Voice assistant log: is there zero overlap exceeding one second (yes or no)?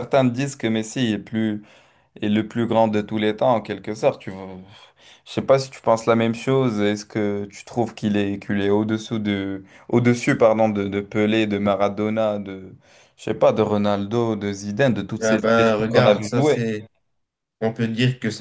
no